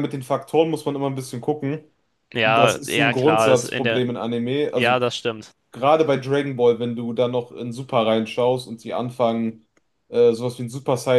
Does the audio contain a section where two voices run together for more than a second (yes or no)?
yes